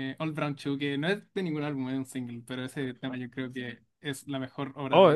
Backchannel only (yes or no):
no